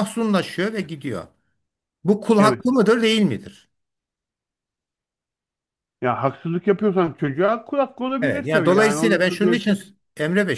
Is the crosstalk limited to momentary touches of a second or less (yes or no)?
no